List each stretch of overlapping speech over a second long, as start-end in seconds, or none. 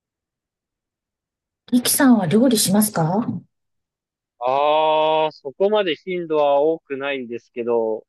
none